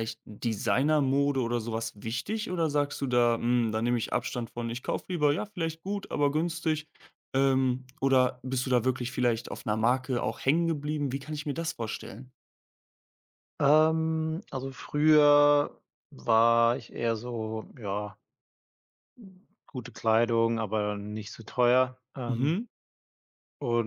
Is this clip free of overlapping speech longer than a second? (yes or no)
yes